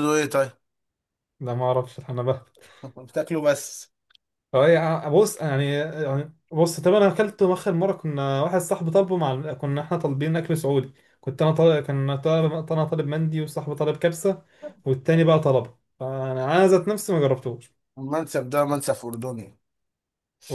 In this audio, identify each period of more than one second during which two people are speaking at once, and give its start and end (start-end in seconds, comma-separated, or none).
none